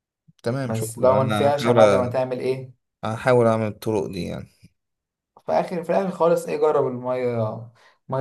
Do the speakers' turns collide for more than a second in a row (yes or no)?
yes